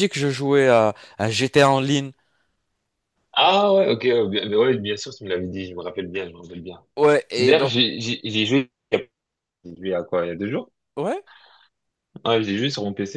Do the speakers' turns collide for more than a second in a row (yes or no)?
no